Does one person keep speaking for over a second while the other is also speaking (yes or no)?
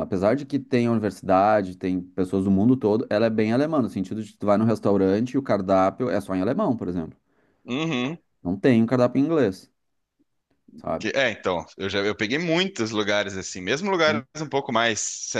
no